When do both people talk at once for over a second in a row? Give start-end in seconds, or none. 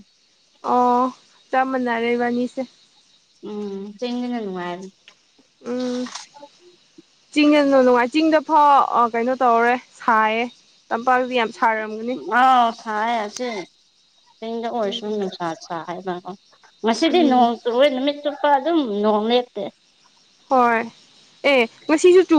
none